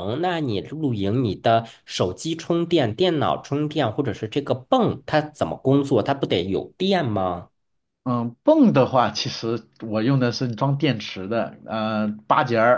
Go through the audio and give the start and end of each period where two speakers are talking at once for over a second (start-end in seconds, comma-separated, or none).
none